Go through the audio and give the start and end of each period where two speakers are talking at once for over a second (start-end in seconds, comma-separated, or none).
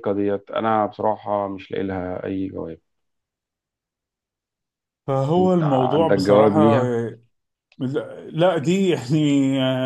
5.4-6.9